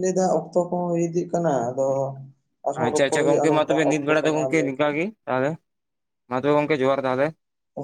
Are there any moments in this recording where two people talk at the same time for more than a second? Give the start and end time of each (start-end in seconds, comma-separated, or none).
2.8-4.9